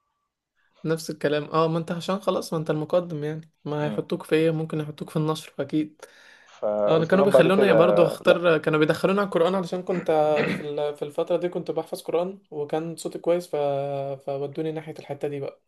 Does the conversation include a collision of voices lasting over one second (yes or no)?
yes